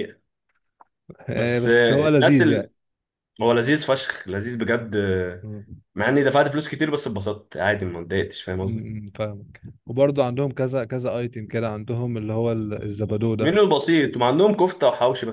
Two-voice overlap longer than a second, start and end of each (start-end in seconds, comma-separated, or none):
1.3-2.7